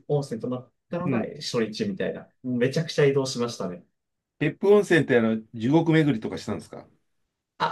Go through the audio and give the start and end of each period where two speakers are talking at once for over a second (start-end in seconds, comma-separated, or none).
none